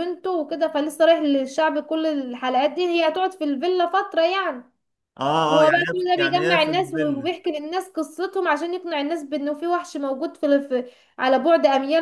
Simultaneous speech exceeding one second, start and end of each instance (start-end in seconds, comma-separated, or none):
5.5-7.3